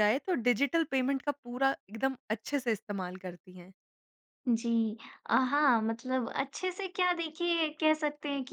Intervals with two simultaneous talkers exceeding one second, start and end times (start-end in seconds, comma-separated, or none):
none